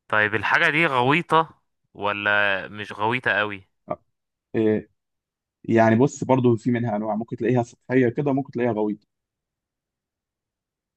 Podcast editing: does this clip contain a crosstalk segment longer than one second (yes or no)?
no